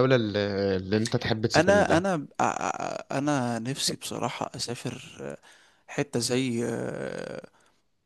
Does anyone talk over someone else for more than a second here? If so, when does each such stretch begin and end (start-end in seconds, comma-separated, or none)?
none